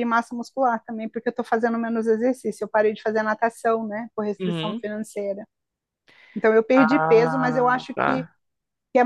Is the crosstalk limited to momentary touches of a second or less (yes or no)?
no